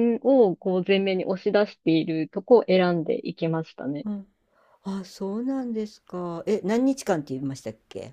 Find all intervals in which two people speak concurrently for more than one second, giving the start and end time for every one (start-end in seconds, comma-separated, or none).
none